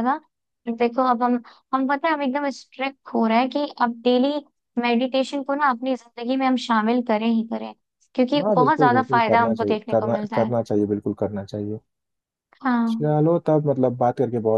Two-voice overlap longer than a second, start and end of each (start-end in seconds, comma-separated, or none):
8.4-10.5